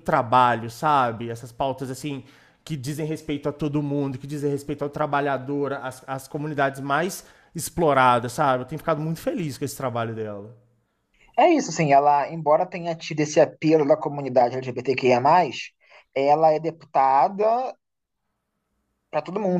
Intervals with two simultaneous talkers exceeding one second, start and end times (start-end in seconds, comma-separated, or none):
none